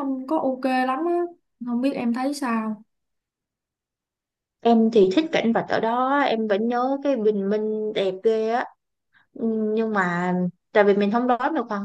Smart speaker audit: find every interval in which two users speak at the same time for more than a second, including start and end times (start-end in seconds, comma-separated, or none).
none